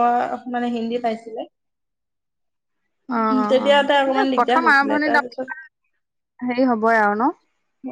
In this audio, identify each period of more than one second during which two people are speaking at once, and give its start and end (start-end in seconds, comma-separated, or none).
3.5-5.5